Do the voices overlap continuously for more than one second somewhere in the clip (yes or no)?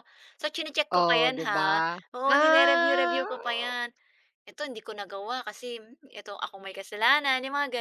yes